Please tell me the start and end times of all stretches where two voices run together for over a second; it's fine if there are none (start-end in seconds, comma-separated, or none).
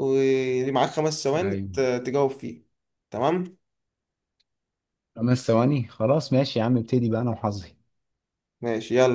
none